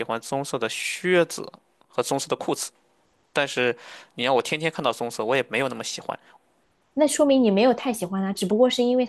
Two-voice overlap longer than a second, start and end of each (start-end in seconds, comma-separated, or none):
none